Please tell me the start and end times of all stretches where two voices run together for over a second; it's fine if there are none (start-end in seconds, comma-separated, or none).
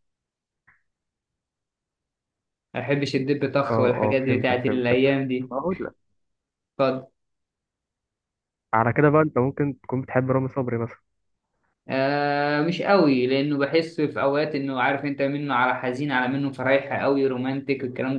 3.7-5.5